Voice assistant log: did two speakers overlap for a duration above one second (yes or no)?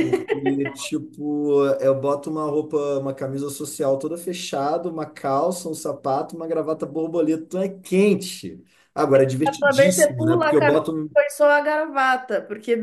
yes